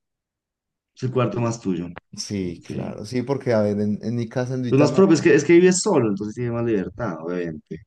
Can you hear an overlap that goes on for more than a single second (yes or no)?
no